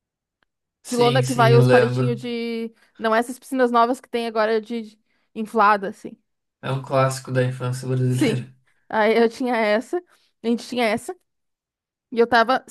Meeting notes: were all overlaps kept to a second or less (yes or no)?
no